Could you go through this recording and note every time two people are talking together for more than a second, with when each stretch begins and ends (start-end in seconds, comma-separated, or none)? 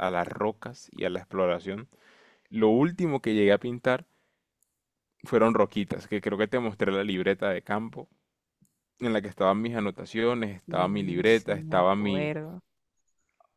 10.7-12.3